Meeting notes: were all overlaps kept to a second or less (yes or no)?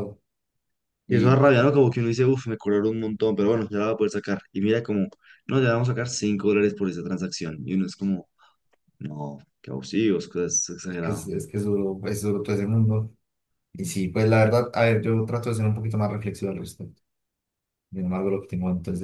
yes